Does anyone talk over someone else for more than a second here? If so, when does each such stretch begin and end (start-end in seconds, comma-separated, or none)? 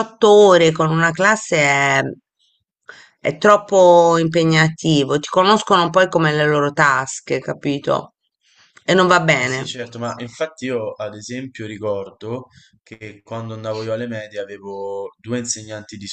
none